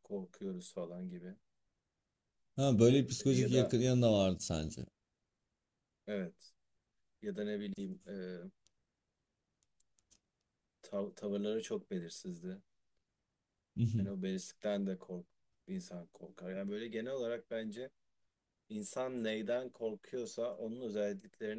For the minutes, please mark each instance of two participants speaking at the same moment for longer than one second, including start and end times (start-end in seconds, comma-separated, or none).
none